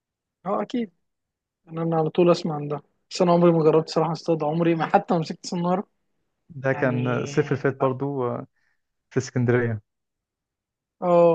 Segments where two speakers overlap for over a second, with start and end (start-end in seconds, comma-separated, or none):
none